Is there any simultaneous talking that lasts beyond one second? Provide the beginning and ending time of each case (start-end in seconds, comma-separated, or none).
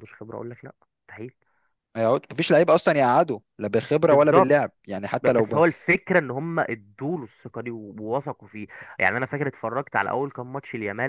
none